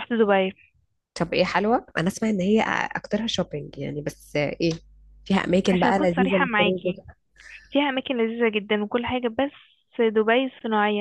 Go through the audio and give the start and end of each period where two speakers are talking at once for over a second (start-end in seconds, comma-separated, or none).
5.7-7.0